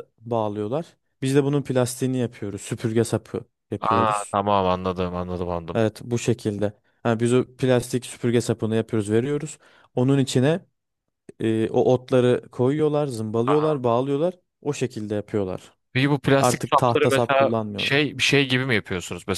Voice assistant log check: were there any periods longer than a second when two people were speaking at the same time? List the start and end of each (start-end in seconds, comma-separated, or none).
16.4-17.9